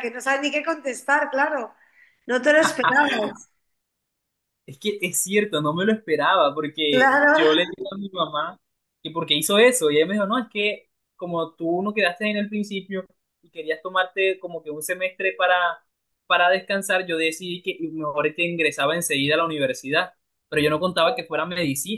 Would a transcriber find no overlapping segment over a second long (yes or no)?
yes